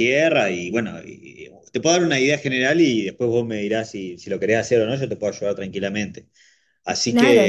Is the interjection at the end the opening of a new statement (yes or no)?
yes